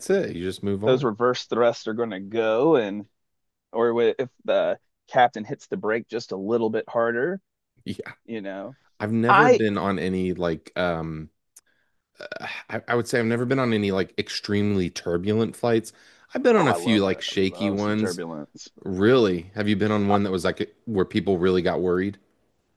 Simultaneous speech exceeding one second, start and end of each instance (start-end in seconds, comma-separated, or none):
16.6-18.2